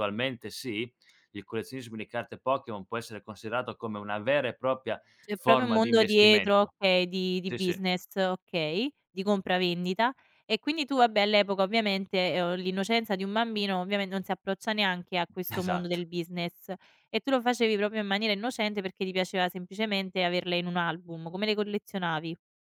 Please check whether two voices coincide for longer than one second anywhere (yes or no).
yes